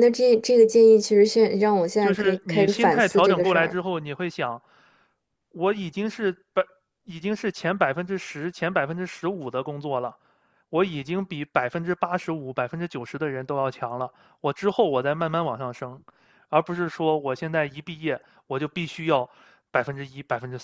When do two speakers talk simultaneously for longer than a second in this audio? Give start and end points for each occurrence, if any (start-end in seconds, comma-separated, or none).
2.0-3.8